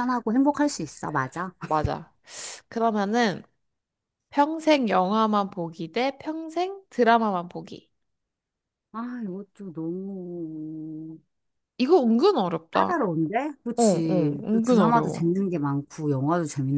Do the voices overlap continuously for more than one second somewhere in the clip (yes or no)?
yes